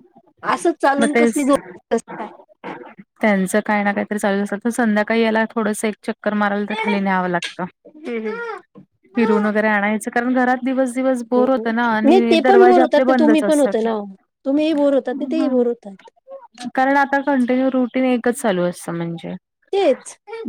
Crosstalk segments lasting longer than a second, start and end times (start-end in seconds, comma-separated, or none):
11.4-13.7